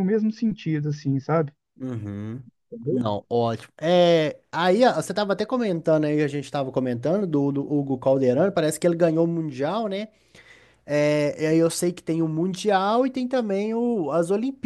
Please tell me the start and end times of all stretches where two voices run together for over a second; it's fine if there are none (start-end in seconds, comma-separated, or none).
none